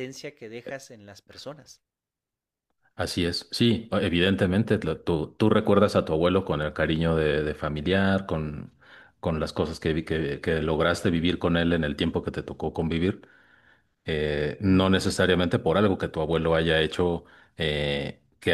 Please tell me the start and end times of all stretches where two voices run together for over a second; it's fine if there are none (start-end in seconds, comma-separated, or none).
none